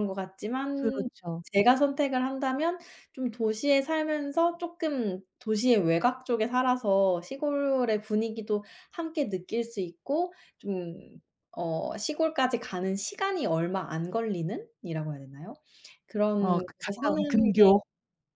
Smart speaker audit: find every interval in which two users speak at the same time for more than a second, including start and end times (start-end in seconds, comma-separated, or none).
16.4-17.7